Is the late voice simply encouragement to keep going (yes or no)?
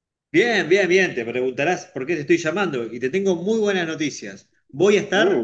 yes